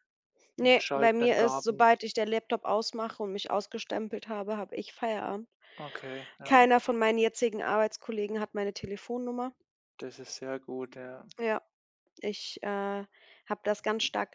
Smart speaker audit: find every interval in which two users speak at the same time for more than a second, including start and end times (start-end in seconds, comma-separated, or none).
0.6-1.9